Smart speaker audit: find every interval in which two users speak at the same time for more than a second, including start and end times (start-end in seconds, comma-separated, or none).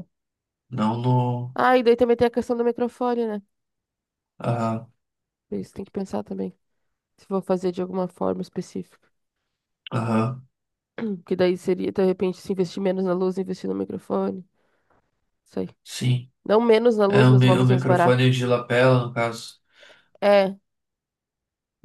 17.1-18.3